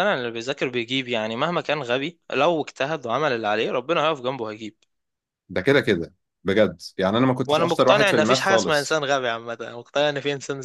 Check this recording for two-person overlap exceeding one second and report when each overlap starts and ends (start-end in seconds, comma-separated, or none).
7.5-9.0